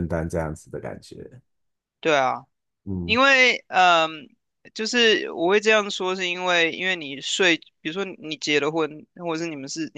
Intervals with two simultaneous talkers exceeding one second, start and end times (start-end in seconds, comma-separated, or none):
none